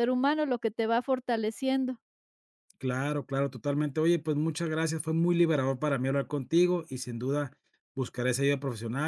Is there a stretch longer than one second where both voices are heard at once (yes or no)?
no